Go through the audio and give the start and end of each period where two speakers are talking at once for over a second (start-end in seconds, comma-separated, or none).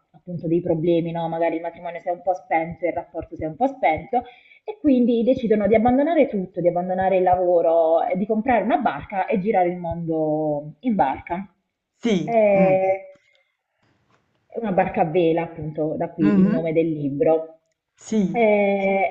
none